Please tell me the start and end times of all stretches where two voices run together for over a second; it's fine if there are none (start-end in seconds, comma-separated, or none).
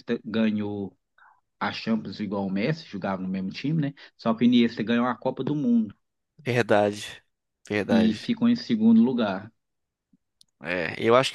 none